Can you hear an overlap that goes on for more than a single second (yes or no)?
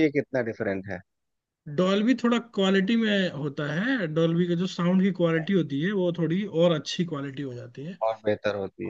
no